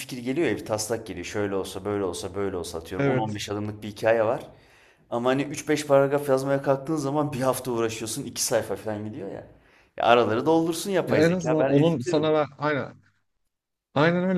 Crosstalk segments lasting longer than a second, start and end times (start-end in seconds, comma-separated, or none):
11.0-12.4